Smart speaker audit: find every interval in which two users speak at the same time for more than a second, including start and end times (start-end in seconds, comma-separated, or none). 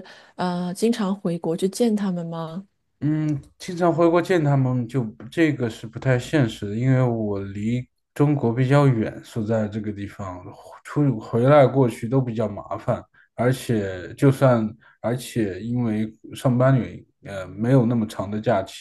none